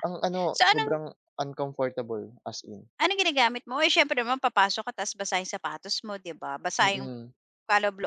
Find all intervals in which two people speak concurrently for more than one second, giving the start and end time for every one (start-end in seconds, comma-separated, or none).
none